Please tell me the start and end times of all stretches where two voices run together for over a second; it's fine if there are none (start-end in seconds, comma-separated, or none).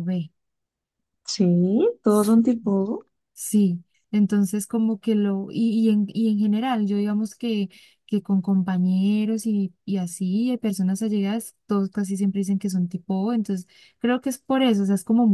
none